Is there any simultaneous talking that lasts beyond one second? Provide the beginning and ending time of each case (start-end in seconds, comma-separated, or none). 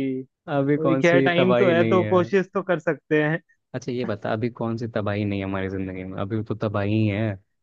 0.8-2.2